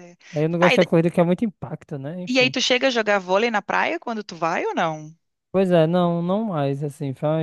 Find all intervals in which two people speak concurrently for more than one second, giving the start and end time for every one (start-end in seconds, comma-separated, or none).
none